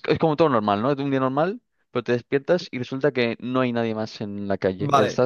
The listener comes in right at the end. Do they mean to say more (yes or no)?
yes